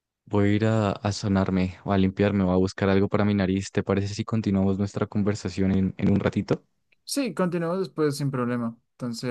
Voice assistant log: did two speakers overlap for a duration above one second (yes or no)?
no